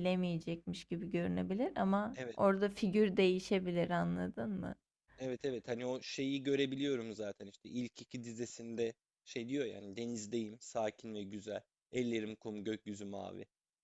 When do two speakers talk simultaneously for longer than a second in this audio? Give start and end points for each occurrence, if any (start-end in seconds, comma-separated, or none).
none